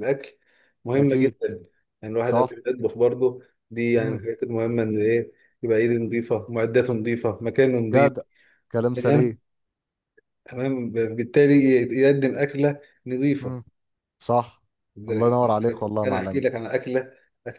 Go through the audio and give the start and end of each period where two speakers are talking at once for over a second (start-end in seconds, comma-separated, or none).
none